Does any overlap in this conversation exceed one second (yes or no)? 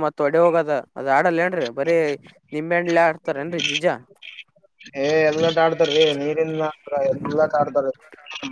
no